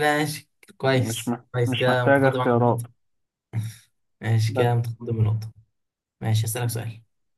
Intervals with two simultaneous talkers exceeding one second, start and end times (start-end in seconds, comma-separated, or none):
0.9-2.9